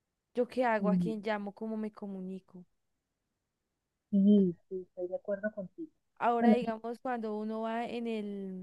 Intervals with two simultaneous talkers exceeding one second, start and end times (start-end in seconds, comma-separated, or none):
none